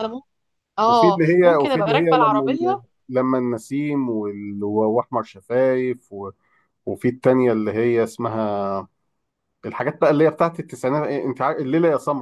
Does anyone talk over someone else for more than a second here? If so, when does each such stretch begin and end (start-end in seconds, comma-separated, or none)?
0.9-2.8